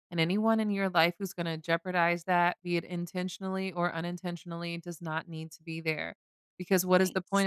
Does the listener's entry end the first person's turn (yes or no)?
no